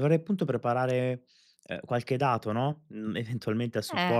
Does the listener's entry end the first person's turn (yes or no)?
no